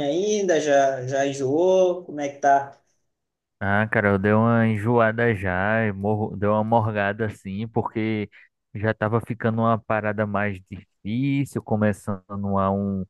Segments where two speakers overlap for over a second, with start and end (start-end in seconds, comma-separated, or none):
none